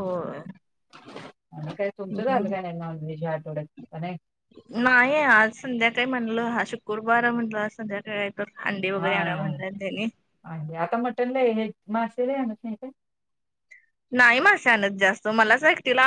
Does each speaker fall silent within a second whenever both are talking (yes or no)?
yes